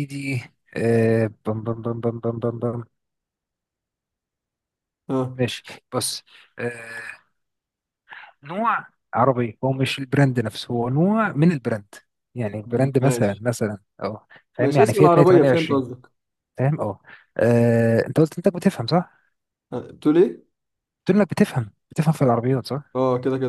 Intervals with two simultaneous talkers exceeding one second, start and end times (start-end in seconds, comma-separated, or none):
14.6-15.8